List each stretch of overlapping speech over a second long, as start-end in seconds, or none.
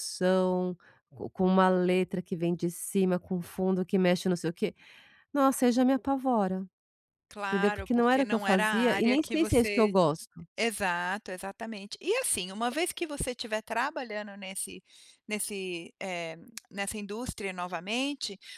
7.5-10.0